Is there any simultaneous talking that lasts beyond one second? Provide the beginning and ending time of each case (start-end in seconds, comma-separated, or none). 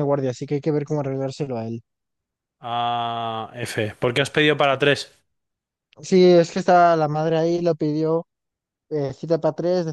none